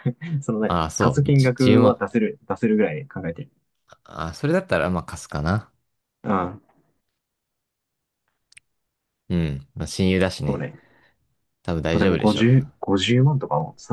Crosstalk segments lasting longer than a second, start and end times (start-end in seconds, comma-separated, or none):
0.6-2.0